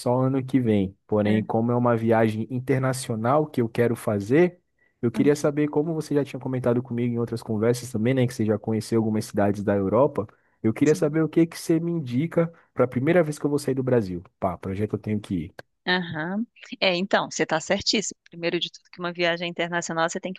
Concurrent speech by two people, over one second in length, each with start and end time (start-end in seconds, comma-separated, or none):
none